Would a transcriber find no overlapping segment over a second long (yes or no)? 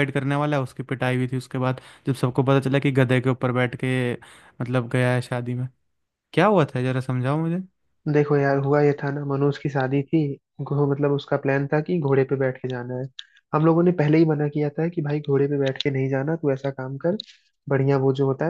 yes